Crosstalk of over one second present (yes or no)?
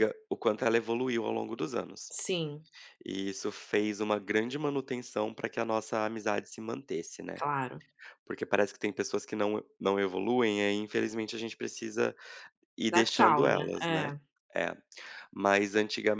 yes